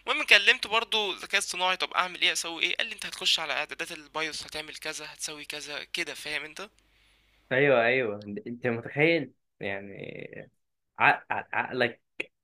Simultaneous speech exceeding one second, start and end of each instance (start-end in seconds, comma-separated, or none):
none